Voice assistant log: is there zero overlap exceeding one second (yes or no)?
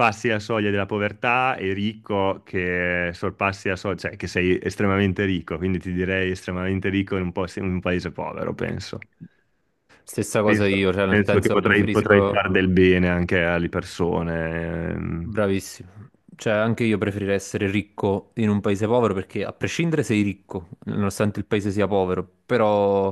no